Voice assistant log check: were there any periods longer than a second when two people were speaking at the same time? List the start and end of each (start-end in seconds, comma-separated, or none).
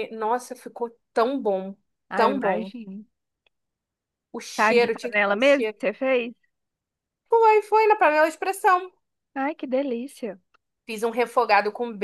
4.5-5.8